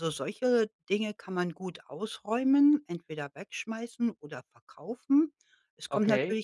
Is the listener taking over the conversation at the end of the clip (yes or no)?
no